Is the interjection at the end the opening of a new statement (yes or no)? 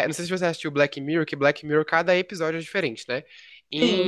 no